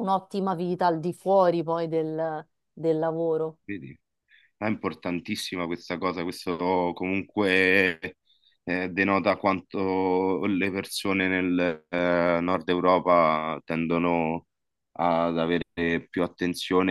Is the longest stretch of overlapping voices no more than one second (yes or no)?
yes